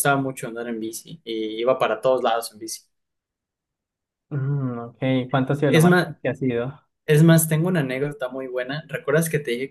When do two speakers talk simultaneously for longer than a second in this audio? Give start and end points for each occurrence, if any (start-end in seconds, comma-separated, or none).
none